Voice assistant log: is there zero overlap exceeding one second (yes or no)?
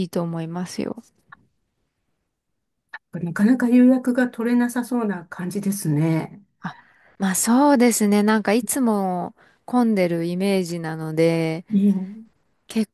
yes